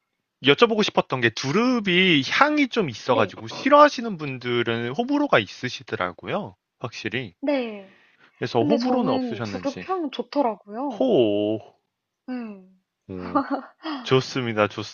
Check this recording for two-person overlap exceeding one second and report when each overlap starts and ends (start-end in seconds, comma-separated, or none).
8.5-9.8